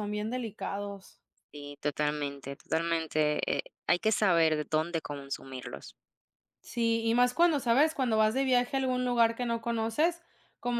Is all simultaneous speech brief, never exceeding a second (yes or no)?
yes